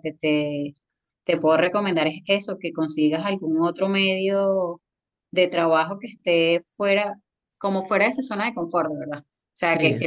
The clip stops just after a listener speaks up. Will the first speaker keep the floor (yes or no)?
yes